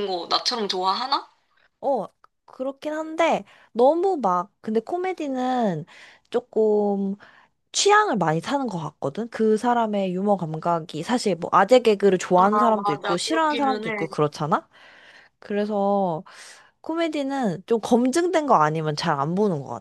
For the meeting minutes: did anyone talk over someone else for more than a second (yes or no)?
yes